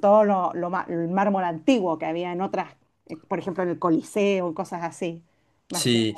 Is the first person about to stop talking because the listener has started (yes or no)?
yes